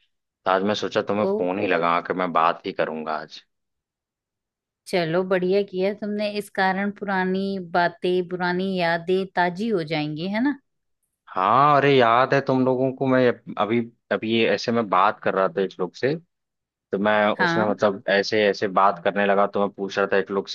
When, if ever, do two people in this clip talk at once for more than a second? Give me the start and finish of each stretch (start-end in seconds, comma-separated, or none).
none